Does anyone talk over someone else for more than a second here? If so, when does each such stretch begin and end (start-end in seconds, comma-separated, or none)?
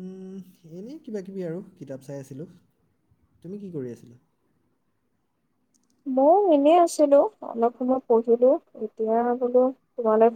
none